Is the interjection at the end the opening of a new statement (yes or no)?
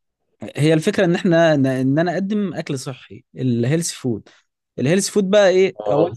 no